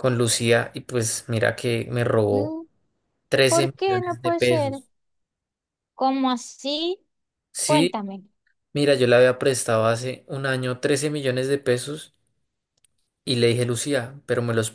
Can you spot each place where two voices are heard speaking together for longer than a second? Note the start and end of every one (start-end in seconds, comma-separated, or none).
3.5-4.8